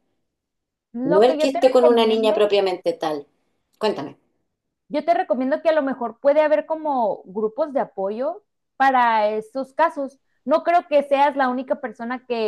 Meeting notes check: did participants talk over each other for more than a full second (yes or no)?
yes